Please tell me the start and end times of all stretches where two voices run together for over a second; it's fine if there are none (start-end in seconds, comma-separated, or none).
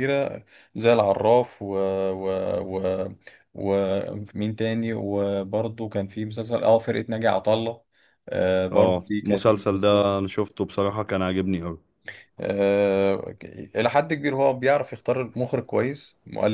8.7-10.1